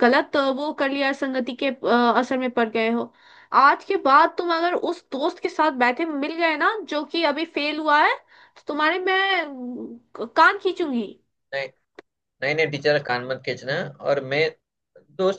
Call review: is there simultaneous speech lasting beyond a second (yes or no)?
no